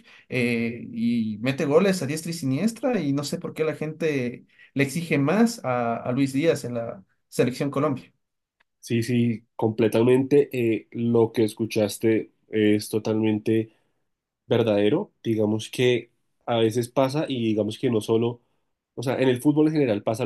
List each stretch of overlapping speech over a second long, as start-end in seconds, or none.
none